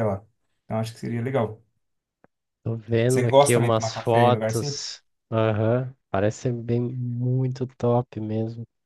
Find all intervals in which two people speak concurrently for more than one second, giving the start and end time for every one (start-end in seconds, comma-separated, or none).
3.1-4.8